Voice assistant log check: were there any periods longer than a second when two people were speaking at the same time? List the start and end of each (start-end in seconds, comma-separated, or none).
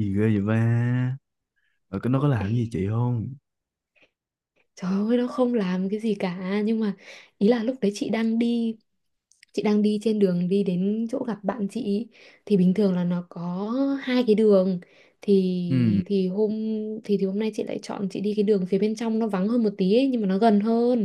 none